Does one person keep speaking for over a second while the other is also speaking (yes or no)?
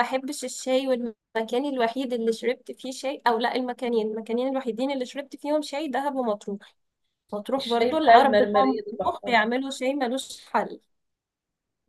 yes